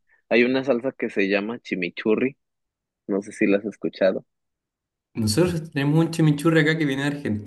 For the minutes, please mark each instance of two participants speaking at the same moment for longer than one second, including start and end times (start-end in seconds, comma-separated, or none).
none